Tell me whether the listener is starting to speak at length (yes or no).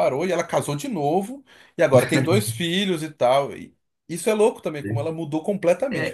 yes